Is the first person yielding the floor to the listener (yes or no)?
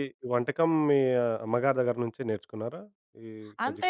yes